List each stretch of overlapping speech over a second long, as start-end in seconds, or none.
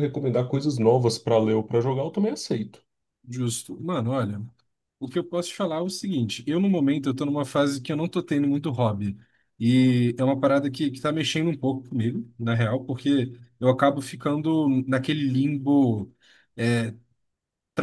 none